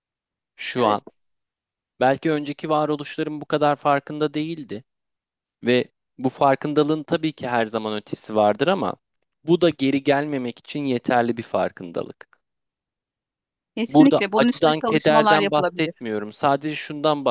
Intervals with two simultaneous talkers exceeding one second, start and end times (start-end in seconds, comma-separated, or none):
13.9-15.9